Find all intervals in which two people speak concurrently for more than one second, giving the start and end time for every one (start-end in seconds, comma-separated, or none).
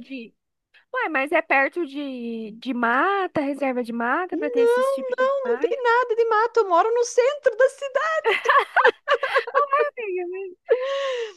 4.3-5.8